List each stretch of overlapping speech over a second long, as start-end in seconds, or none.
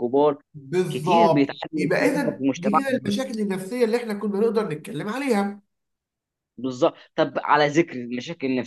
0.9-3.0